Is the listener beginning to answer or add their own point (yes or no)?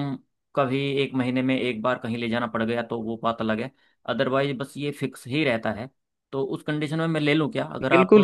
yes